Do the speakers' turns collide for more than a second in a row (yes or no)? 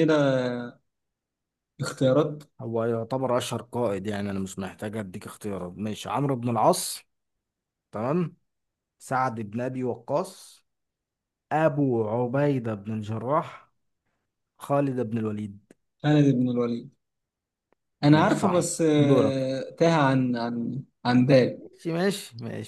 yes